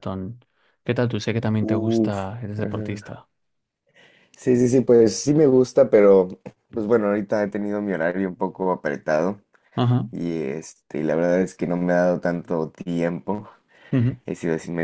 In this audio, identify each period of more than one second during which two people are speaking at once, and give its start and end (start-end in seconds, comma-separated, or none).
1.6-3.2